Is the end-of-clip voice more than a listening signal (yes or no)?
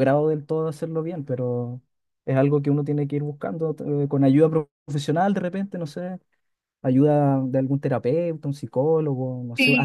yes